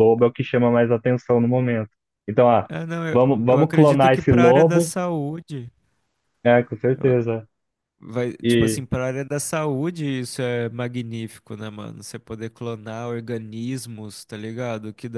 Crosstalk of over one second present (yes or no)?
yes